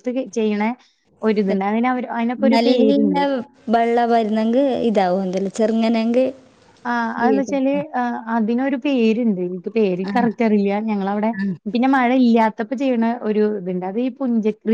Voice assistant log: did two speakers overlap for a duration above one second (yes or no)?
no